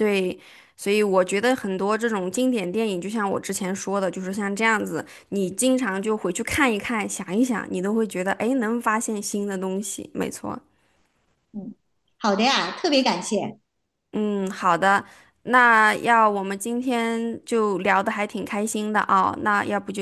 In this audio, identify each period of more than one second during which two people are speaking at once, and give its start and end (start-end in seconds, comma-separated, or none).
none